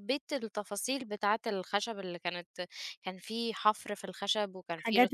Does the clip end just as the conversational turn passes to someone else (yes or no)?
yes